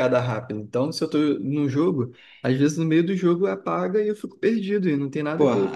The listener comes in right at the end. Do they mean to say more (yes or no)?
yes